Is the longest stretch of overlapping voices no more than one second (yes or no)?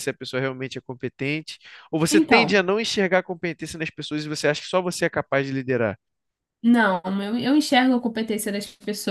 yes